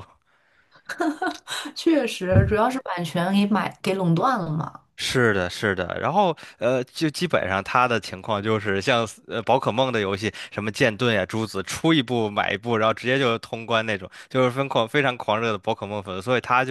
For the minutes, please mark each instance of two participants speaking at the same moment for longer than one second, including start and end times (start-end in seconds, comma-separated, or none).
none